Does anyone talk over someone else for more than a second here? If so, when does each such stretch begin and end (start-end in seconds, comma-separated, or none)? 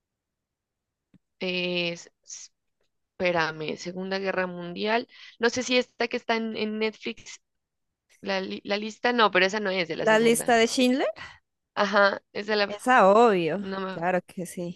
none